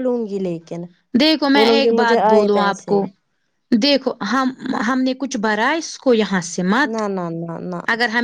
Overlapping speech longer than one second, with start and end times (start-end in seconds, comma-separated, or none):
1.5-3.0